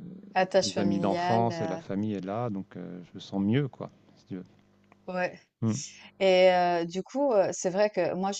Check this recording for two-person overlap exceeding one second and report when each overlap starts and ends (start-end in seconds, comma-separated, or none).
0.6-1.8